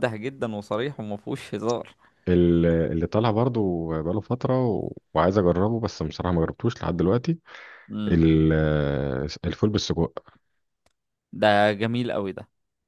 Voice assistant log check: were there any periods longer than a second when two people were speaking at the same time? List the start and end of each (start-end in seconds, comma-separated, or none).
none